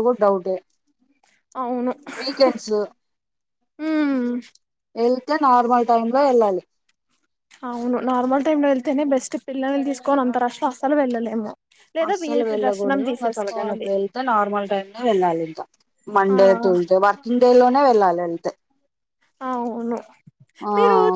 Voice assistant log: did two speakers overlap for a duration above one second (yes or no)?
yes